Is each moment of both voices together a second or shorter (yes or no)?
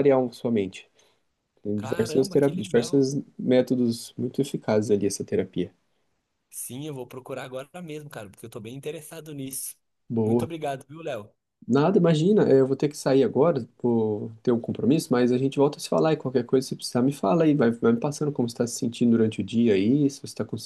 no